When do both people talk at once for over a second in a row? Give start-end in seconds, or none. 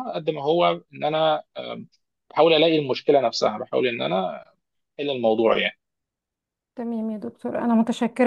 none